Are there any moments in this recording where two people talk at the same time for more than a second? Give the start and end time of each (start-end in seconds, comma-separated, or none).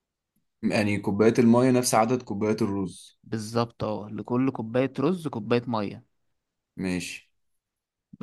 none